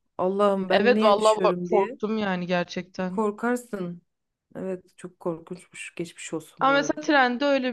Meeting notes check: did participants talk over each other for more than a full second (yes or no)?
yes